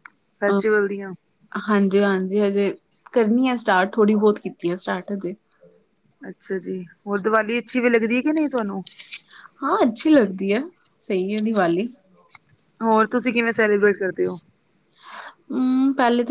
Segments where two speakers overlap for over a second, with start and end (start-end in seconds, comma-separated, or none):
none